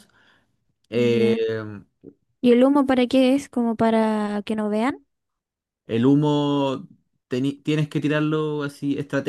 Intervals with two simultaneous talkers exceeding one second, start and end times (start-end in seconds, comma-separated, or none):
none